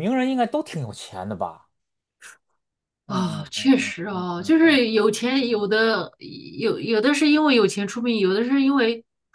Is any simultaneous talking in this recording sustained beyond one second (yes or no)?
yes